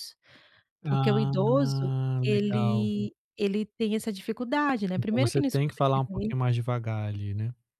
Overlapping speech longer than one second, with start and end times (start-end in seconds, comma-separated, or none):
0.9-2.9, 5.0-6.3